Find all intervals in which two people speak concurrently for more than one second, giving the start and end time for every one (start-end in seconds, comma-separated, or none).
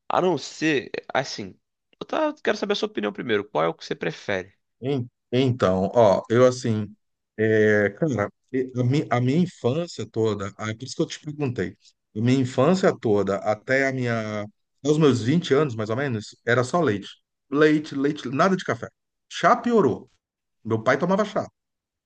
none